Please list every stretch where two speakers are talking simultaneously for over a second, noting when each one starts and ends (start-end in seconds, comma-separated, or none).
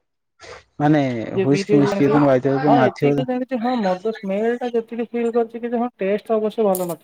1.4-3.1